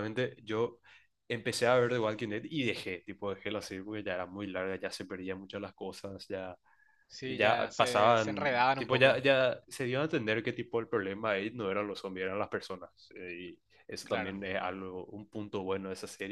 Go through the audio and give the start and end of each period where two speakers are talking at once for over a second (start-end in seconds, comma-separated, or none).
7.2-9.2